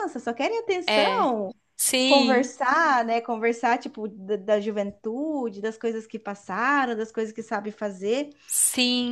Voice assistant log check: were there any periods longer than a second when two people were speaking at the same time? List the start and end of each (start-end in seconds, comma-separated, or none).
none